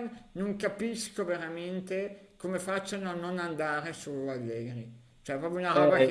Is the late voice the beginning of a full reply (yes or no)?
yes